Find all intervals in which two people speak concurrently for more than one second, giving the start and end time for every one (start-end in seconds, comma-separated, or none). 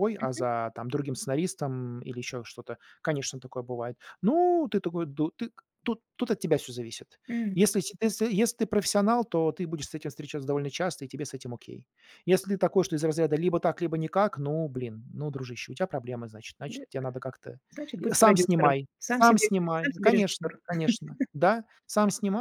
18.0-20.6